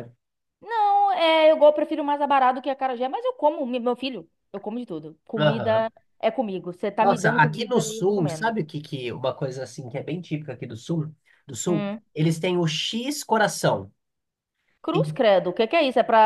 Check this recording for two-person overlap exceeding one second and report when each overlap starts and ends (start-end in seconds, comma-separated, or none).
7.0-8.6